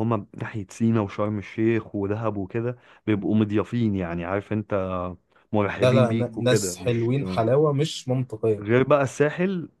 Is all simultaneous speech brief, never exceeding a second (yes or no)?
no